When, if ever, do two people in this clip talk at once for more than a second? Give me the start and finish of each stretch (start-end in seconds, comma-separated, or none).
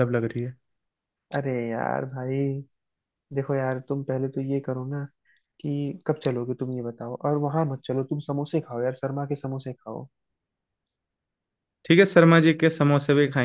none